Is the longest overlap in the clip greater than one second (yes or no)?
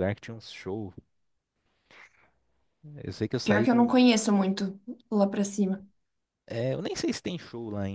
no